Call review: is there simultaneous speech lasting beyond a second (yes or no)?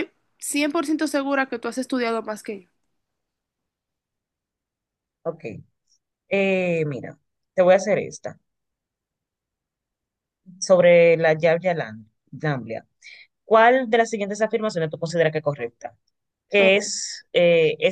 no